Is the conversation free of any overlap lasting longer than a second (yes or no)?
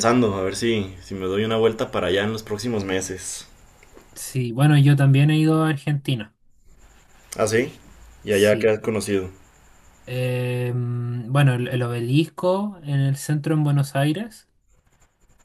yes